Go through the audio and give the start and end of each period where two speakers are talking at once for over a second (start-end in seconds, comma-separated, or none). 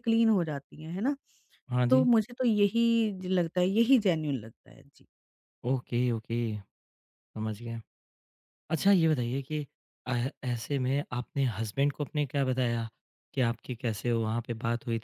none